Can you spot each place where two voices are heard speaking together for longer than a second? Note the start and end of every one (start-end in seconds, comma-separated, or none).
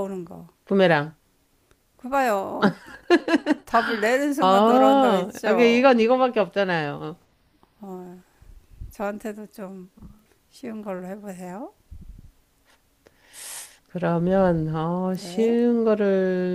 4.4-5.9